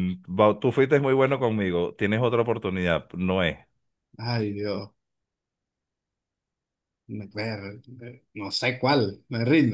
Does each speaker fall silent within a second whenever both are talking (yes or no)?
yes